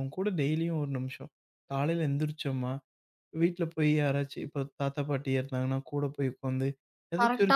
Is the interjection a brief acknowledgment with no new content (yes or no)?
yes